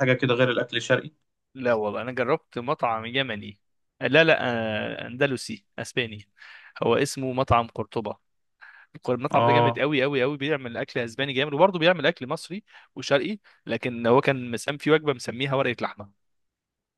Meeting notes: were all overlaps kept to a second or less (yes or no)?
yes